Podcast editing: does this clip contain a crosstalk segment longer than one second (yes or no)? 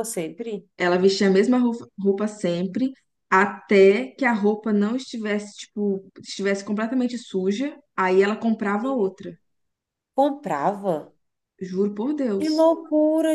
no